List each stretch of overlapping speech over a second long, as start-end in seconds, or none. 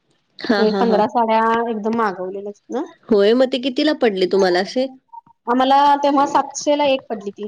none